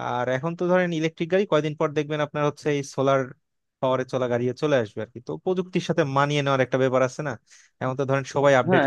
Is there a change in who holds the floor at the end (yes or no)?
yes